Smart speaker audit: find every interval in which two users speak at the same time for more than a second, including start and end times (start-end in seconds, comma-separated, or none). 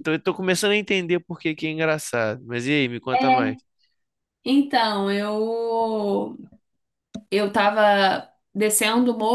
none